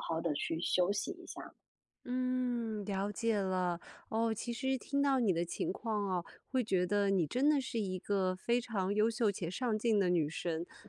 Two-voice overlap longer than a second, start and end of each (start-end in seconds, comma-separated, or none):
none